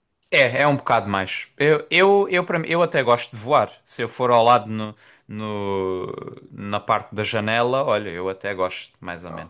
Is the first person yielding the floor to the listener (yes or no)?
yes